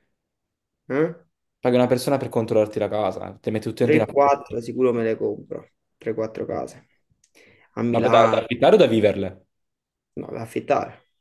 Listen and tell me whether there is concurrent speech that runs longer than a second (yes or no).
no